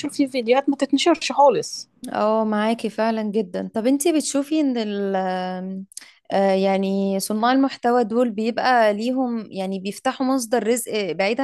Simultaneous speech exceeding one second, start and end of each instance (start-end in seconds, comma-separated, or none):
none